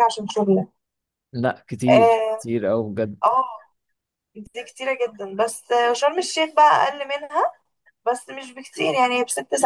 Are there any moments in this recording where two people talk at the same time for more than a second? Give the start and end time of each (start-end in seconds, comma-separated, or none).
none